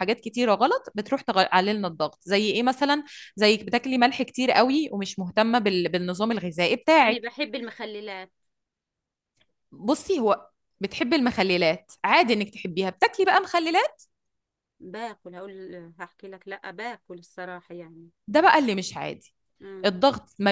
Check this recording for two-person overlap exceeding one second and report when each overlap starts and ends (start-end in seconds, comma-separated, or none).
none